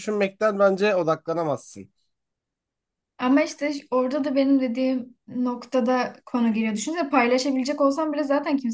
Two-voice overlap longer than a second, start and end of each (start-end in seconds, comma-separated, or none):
none